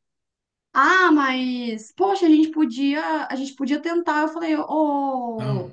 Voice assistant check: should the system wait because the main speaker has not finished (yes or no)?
yes